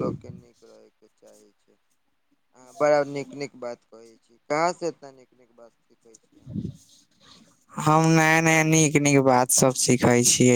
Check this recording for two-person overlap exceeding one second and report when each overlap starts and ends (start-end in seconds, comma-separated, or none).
none